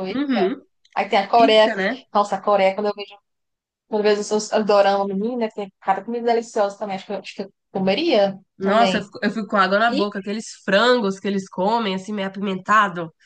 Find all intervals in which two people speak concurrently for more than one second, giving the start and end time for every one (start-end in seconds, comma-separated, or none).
none